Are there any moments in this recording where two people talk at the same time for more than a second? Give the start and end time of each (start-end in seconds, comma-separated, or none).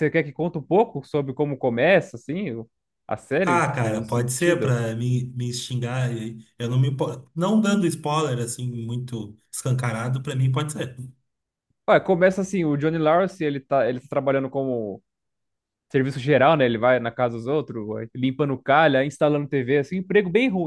3.4-4.8